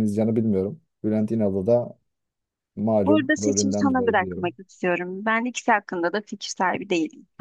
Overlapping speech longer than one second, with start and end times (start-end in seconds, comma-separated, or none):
3.0-4.5